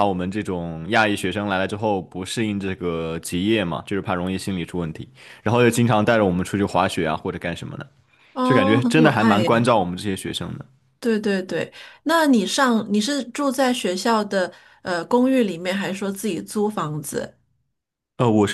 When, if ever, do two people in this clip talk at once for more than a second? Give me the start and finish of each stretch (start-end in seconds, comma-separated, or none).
8.4-9.7